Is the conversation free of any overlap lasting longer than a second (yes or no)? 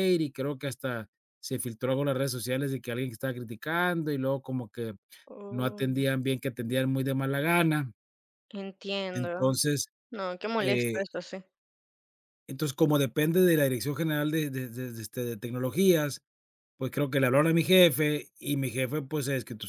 yes